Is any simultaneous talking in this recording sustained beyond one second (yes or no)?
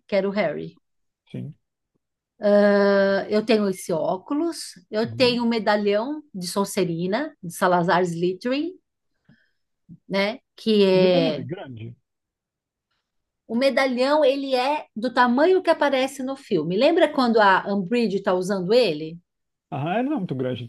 no